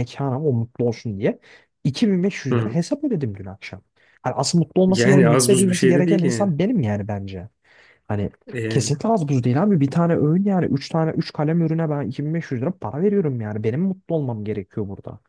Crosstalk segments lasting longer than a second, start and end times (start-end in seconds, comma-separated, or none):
4.9-6.5